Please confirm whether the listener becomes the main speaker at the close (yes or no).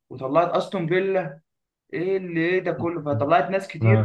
no